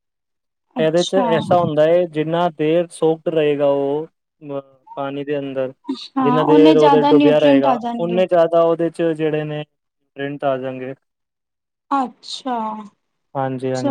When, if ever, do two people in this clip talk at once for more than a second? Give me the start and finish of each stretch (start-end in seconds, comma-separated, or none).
6.2-8.2